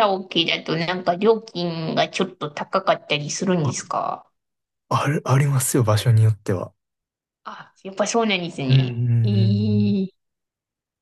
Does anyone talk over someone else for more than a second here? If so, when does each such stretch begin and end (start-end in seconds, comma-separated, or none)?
8.7-10.1